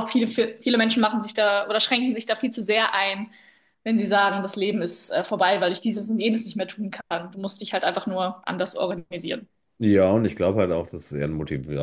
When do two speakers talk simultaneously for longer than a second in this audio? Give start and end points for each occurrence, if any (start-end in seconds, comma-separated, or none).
none